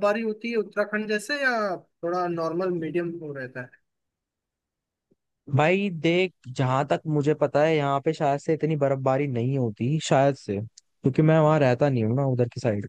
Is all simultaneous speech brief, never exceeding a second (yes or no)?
yes